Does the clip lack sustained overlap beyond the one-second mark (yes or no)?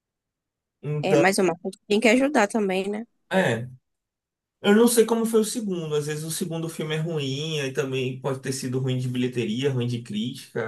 yes